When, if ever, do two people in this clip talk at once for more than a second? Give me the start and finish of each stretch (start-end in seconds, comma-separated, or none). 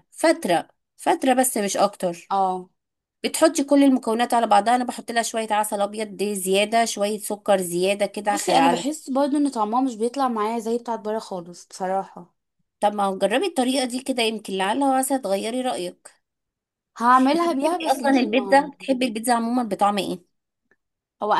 17.3-18.7